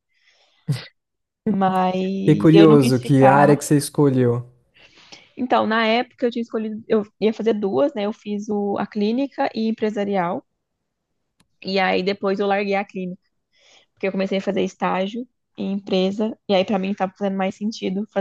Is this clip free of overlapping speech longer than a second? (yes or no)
no